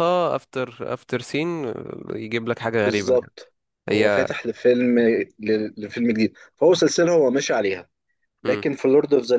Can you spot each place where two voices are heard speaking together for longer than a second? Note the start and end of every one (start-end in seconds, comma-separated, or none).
none